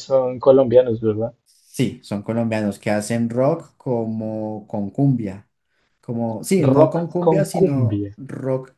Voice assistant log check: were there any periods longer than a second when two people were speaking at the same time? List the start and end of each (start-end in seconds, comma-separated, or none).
6.6-8.1